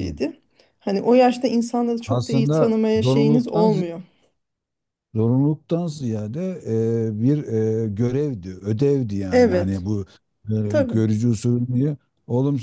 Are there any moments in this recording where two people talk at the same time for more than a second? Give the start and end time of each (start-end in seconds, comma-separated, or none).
2.0-3.7